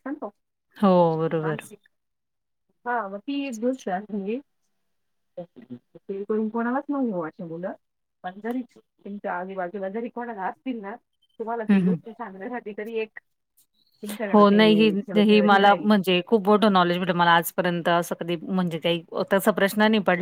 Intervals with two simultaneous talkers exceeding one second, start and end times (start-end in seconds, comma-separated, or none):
14.3-15.9